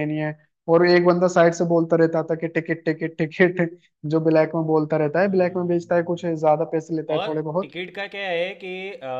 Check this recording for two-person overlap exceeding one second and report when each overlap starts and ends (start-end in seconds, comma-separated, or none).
5.2-6.4